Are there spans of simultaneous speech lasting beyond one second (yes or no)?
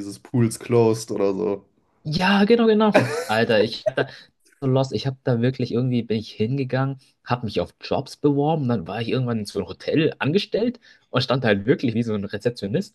no